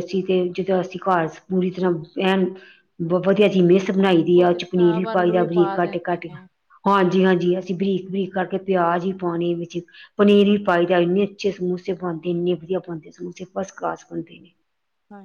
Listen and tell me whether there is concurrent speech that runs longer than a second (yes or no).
yes